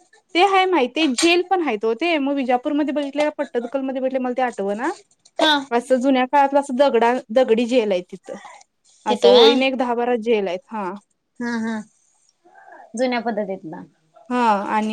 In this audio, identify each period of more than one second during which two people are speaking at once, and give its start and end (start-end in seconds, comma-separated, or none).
none